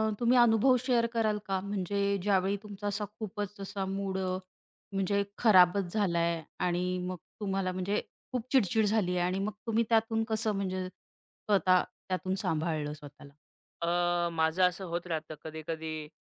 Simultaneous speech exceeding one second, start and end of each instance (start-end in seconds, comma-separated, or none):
none